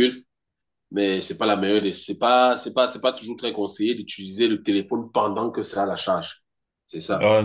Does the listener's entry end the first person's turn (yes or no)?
yes